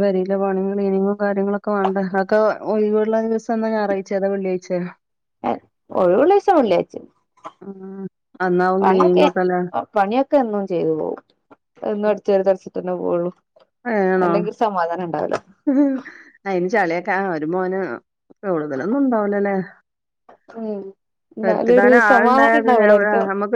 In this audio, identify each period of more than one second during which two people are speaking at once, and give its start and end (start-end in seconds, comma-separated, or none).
21.5-22.9